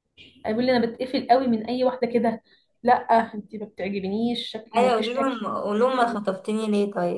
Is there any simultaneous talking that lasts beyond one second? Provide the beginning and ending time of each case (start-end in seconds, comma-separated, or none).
4.8-6.4